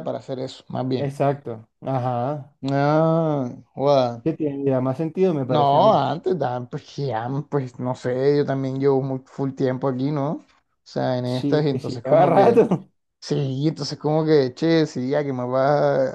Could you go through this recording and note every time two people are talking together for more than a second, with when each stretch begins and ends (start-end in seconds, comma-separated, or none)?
11.2-12.6